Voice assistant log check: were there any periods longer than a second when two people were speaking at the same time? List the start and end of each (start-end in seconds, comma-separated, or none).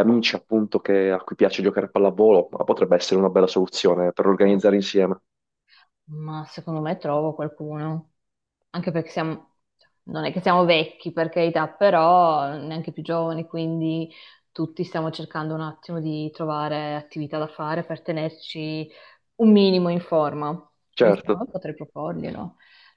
none